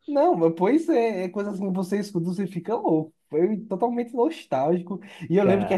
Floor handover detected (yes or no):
no